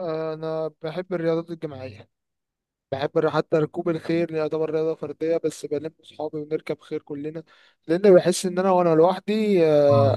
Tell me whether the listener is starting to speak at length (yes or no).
no